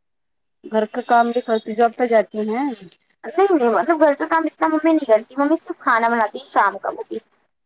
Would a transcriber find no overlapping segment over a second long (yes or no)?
yes